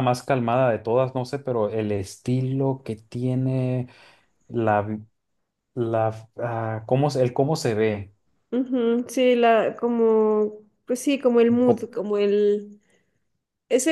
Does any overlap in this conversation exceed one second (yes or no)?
no